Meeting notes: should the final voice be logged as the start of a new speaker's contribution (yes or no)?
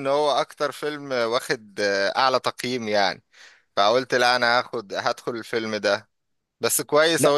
no